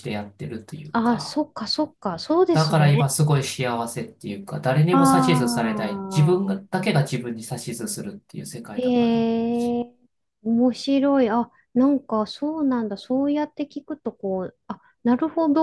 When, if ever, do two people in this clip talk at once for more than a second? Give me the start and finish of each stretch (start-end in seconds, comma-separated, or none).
4.9-6.4